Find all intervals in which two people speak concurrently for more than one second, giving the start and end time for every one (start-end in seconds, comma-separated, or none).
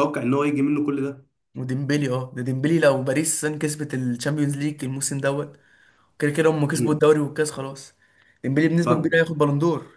none